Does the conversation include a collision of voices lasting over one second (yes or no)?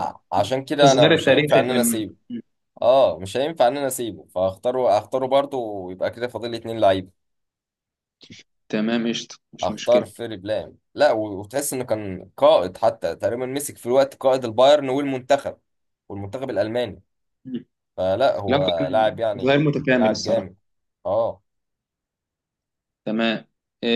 yes